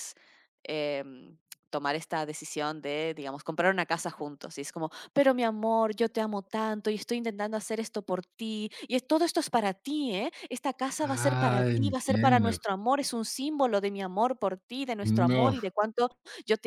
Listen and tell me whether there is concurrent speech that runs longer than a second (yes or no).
yes